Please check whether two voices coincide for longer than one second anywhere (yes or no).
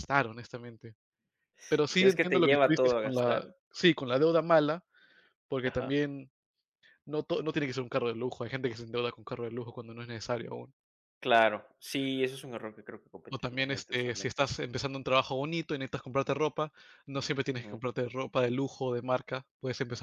yes